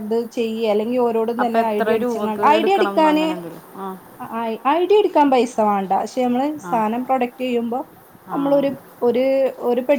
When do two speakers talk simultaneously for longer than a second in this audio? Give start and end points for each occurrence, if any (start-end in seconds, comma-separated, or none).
1.4-3.3